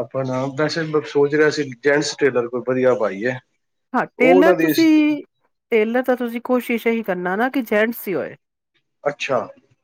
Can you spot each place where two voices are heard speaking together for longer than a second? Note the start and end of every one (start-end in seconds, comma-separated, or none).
none